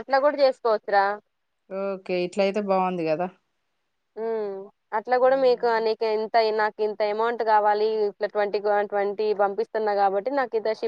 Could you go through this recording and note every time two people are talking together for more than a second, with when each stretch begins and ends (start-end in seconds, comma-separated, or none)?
none